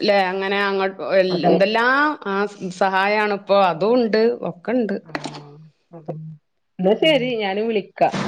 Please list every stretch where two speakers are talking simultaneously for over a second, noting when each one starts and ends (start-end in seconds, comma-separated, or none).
none